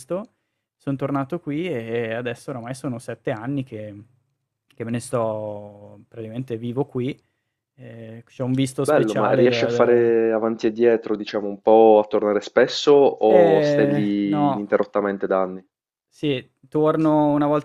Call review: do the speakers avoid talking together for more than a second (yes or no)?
no